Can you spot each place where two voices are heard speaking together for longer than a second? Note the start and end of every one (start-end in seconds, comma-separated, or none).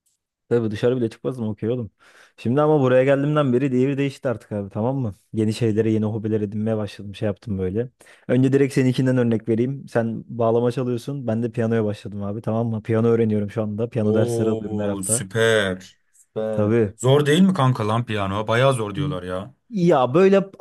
14.0-15.2